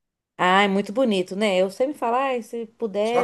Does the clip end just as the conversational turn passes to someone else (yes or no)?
yes